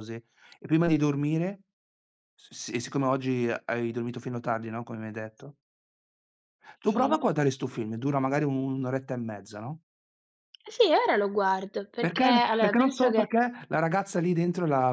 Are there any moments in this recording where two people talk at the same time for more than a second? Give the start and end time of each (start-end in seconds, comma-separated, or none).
12.0-13.3